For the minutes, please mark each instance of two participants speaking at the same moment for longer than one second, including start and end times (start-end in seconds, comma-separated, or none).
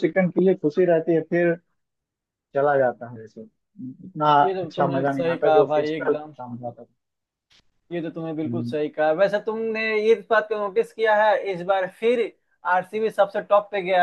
4.4-6.3